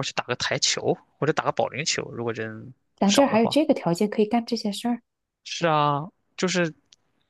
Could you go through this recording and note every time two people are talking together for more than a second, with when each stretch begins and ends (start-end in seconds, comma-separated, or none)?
none